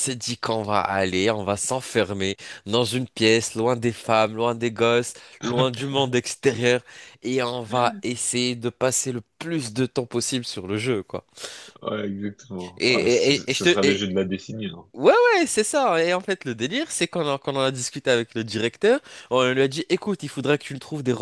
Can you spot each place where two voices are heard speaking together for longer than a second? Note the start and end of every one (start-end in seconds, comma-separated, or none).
12.8-14.1